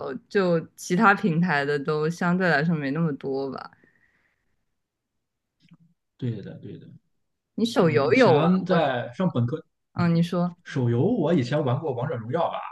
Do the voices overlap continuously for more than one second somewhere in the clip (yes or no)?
yes